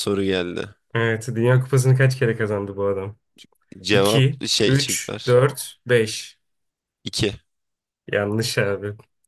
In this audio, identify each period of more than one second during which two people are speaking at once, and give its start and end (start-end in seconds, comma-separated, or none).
3.9-5.5